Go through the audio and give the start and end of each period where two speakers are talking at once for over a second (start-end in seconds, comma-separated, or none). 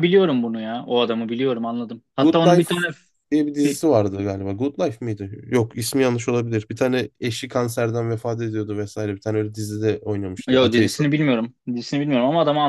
none